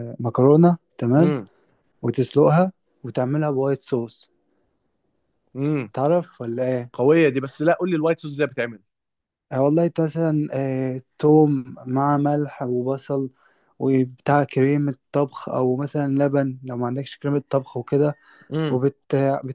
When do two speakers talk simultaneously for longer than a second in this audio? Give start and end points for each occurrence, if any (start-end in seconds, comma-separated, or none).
none